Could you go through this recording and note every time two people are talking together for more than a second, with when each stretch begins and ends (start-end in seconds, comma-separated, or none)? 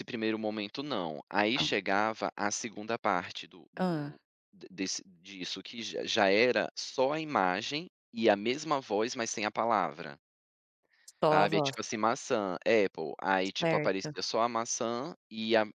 none